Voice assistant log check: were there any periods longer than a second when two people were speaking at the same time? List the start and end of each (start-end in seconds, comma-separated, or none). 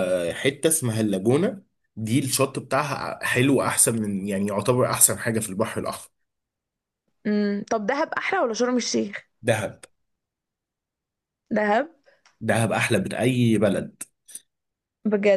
none